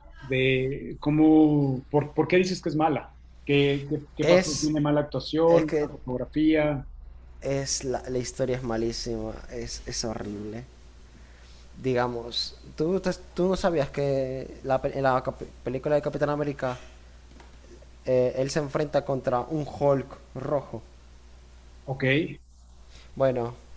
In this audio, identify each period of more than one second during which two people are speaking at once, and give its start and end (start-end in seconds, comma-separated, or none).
none